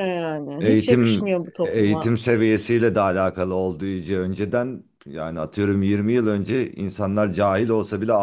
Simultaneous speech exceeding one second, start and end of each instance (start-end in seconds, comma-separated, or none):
0.6-2.1